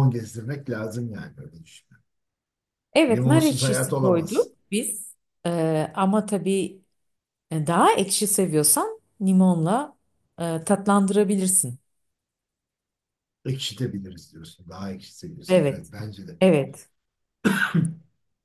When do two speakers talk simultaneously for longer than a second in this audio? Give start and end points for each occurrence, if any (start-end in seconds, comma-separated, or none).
3.1-4.5